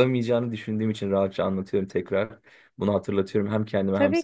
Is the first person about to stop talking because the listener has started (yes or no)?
yes